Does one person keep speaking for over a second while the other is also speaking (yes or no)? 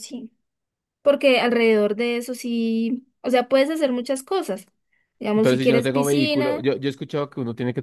yes